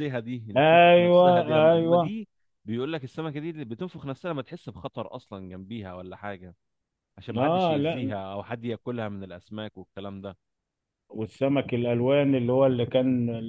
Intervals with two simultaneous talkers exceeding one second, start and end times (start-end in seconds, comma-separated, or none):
0.6-2.1